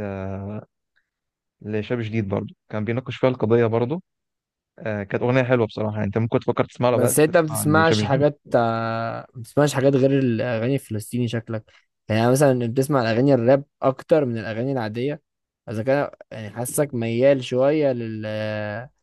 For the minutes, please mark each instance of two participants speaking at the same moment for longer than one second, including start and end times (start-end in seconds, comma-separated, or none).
6.9-8.2